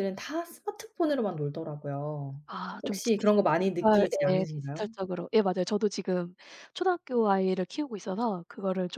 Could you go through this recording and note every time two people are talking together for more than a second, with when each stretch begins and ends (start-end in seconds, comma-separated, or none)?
2.8-4.8